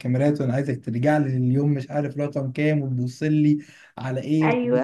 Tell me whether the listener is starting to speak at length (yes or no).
no